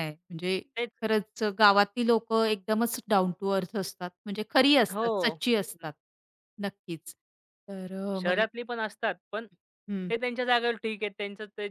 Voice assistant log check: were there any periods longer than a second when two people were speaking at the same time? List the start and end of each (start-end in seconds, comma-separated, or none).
none